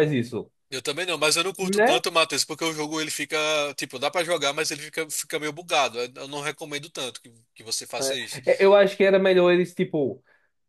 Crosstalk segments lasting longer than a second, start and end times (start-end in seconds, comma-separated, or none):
none